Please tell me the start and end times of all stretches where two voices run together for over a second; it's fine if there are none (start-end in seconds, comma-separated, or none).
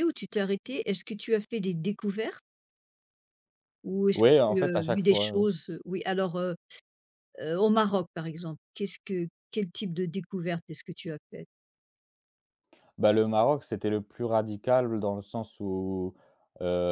4.1-5.5